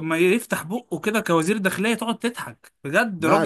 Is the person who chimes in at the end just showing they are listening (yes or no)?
no